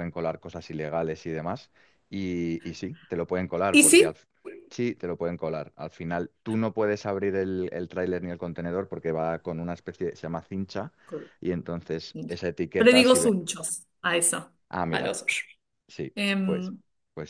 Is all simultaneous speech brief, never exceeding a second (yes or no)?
no